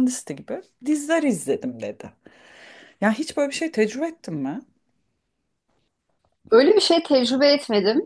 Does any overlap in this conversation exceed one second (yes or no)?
no